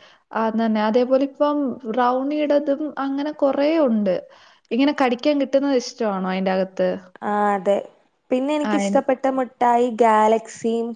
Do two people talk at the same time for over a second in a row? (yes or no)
no